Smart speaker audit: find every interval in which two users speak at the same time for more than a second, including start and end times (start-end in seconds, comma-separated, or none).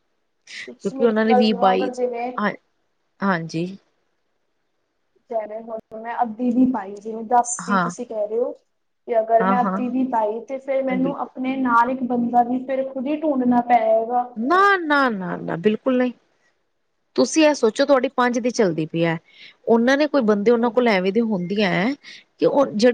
0.7-1.9